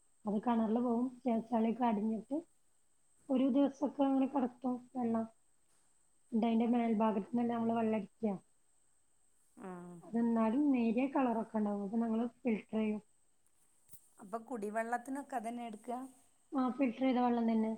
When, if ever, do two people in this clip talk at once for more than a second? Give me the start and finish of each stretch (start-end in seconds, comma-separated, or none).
none